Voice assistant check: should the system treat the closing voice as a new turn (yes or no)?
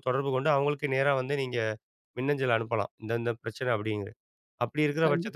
no